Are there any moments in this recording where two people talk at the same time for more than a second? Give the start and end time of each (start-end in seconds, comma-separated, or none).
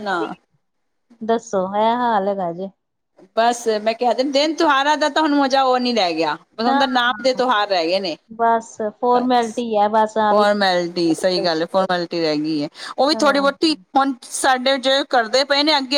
none